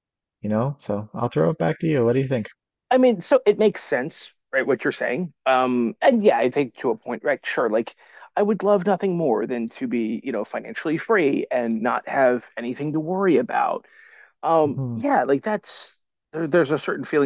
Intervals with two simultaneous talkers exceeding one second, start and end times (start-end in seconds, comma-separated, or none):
none